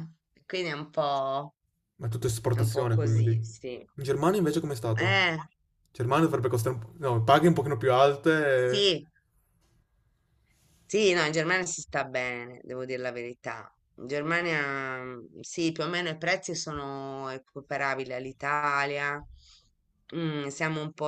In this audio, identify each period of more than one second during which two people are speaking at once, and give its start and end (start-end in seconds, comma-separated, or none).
2.5-3.9